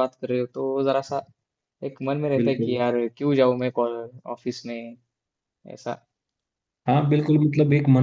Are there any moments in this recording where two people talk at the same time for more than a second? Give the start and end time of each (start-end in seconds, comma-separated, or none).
none